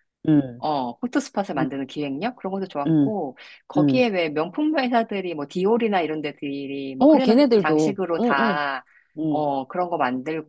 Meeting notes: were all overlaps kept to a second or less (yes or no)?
no